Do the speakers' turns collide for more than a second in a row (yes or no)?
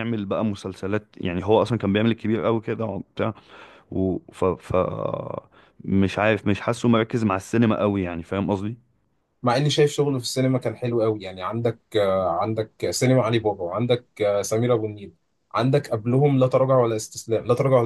no